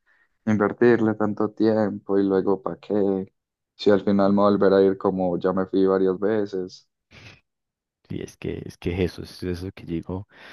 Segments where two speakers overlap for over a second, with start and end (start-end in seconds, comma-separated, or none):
none